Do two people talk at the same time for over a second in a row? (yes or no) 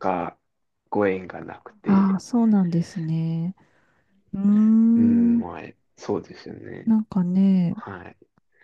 no